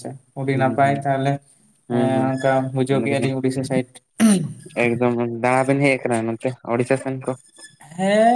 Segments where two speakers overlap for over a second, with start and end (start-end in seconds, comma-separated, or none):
none